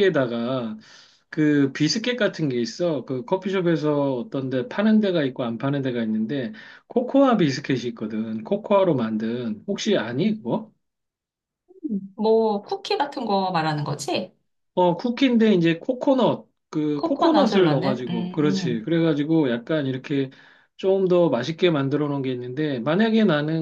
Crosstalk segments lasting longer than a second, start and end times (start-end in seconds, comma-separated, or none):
16.9-18.8